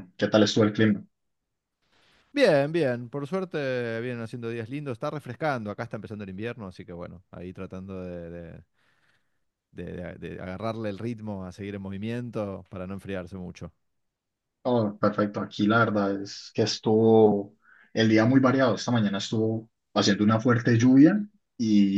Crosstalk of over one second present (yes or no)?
no